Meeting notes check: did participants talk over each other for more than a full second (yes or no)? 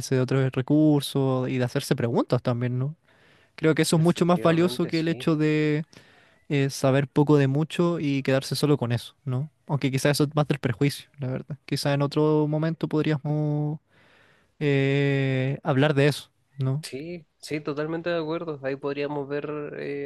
yes